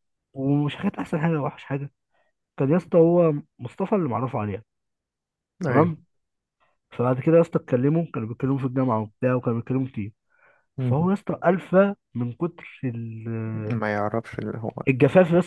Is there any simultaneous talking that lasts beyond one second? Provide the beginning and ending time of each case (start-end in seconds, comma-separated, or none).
none